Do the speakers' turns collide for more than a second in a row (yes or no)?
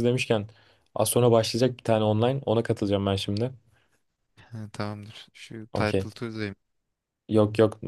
no